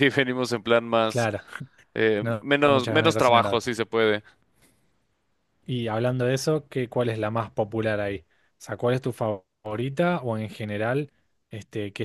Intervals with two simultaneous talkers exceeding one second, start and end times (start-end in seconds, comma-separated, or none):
2.2-3.6